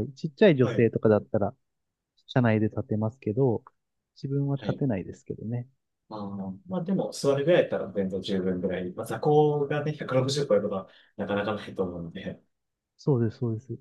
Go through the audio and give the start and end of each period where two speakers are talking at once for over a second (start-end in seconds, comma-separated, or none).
none